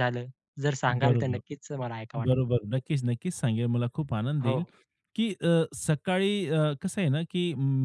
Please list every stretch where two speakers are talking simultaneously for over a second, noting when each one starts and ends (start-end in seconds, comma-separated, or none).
none